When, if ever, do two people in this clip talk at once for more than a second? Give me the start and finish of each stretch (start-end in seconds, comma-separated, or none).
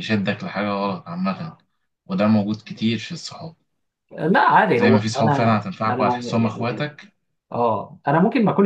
4.8-6.9